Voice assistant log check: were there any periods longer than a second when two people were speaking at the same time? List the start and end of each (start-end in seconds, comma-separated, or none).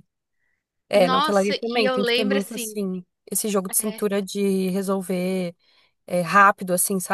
0.9-2.8